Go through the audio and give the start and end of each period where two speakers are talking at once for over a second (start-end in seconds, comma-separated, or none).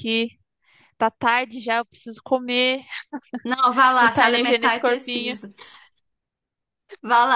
4.0-5.4